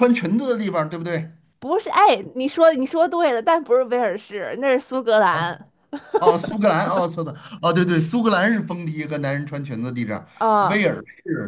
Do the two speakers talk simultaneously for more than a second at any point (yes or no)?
no